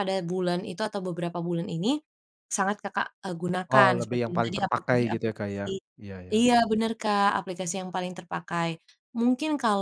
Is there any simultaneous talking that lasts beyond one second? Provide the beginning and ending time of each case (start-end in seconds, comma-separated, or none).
3.7-5.6